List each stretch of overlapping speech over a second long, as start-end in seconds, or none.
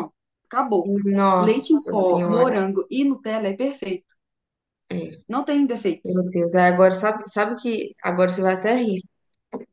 1.4-2.6